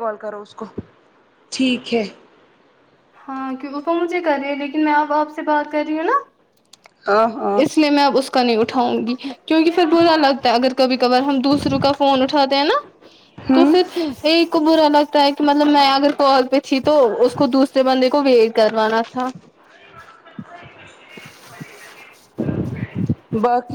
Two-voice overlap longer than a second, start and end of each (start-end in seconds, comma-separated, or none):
none